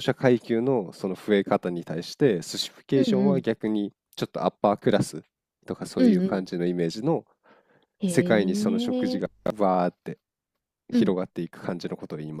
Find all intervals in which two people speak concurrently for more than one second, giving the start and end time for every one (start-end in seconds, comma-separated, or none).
8.1-9.2